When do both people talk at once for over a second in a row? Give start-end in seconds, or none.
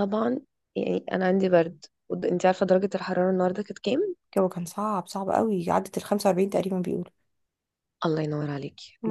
none